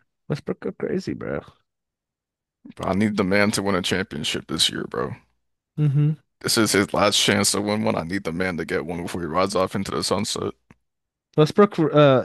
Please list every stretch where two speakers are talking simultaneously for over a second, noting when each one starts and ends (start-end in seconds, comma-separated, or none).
none